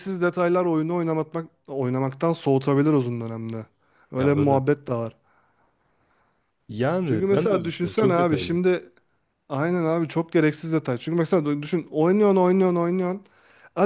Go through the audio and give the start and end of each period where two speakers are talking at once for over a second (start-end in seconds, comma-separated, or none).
7.0-8.6